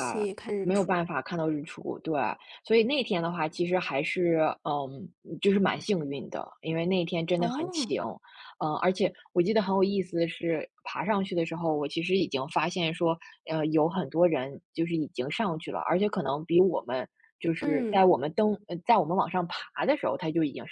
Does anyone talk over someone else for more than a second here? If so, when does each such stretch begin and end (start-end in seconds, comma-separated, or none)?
none